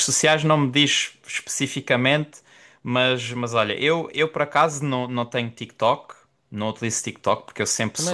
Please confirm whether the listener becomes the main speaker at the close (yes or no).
no